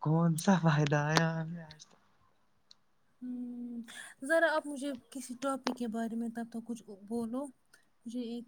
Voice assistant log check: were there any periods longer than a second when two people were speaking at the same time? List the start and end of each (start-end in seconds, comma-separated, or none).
none